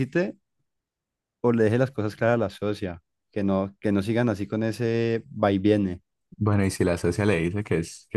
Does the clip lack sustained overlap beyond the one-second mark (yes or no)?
yes